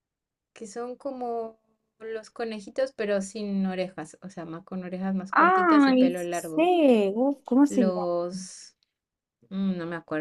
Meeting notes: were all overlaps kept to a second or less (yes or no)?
no